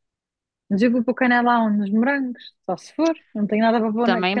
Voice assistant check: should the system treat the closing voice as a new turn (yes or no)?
yes